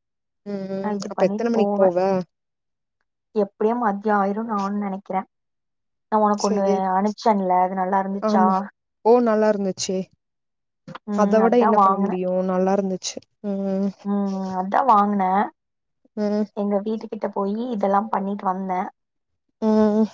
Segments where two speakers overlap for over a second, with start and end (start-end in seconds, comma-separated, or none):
none